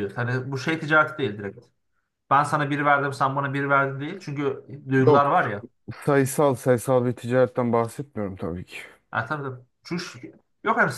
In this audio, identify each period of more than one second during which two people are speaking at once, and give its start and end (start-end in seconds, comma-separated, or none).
none